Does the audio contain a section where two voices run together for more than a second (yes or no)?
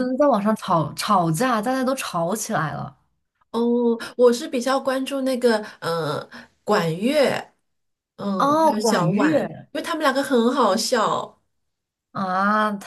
yes